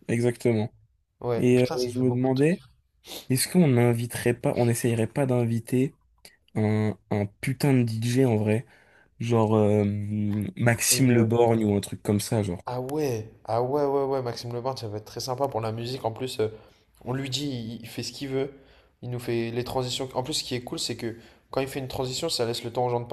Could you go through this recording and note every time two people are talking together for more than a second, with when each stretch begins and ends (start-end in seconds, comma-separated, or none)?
1.4-2.6